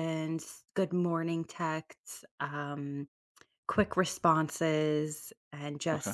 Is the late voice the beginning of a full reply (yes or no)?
no